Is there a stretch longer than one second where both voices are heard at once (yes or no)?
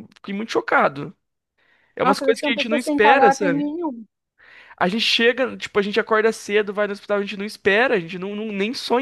yes